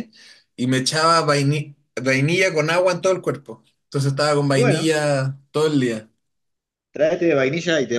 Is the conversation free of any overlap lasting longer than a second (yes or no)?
yes